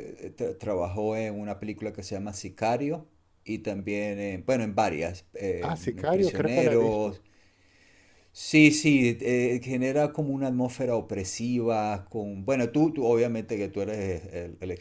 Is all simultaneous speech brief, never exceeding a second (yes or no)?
no